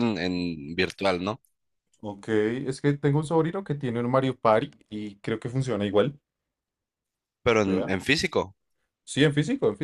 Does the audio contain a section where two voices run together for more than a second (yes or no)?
no